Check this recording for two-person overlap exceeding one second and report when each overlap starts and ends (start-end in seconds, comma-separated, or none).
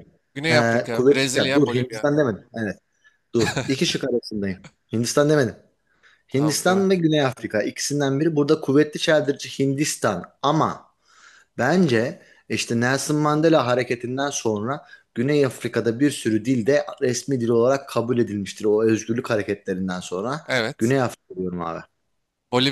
0.5-2.1